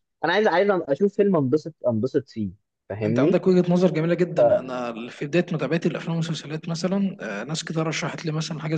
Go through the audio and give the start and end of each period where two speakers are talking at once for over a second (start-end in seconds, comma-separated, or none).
none